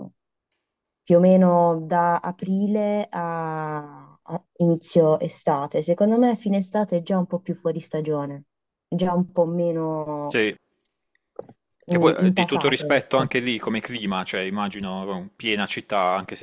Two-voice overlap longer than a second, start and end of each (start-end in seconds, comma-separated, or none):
11.9-13.3